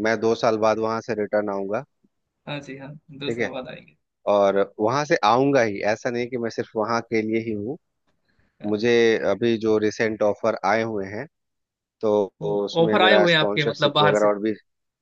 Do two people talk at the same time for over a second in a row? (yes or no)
yes